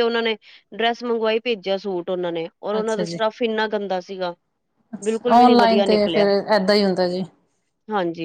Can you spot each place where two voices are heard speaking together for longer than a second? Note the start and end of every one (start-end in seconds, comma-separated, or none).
5.0-6.3